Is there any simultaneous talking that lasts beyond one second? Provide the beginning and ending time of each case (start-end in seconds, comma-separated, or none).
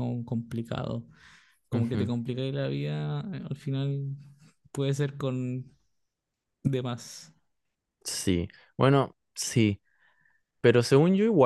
none